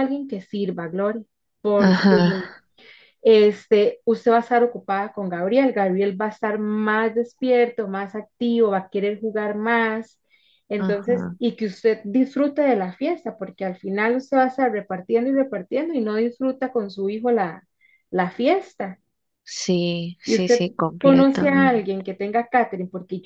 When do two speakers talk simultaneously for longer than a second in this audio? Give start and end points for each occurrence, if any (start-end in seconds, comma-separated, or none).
20.3-21.9